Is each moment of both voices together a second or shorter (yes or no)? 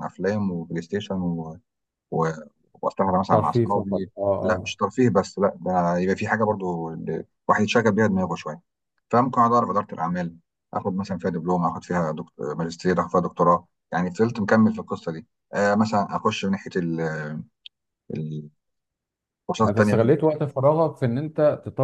no